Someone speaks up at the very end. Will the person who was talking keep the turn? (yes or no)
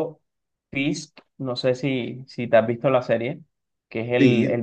yes